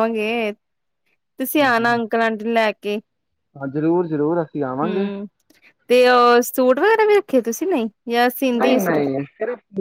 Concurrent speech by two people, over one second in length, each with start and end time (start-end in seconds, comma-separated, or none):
none